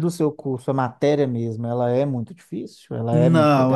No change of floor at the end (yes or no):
no